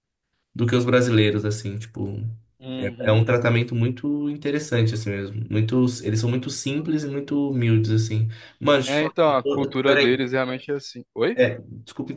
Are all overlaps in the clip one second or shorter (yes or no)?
no